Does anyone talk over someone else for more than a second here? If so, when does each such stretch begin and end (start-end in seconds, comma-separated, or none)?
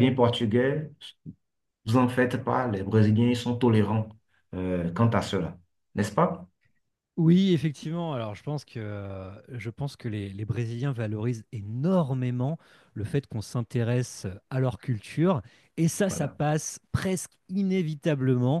none